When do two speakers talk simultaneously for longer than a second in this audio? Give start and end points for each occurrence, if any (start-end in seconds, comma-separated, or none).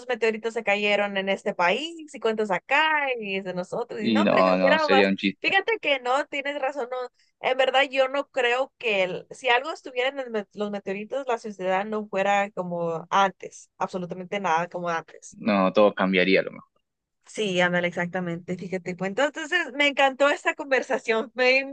4.0-5.5